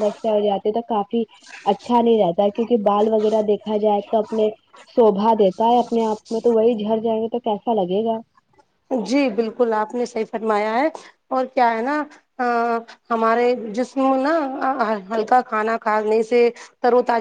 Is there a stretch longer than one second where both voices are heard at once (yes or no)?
no